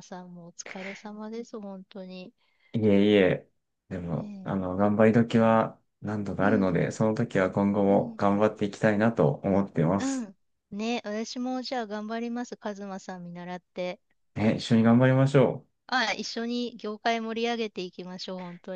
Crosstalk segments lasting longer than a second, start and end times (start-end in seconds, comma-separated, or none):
none